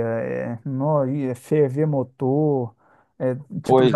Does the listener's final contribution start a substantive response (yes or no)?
no